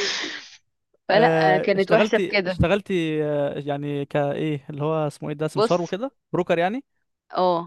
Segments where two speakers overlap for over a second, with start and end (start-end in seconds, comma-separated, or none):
1.1-2.6